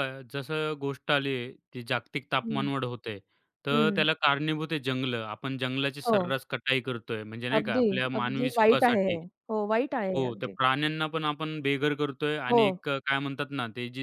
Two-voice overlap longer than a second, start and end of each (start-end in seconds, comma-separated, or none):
7.6-9.2